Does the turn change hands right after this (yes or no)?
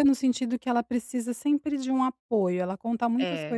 no